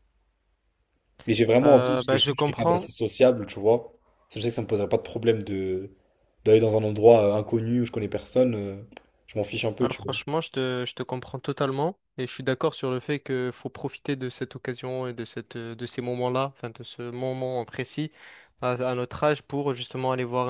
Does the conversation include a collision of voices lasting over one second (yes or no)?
yes